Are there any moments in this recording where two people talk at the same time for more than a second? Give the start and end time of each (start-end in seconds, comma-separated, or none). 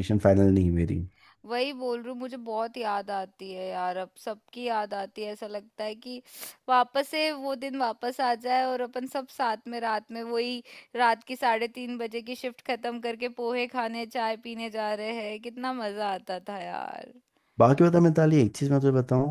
none